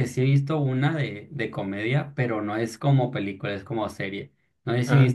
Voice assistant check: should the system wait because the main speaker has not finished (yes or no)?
yes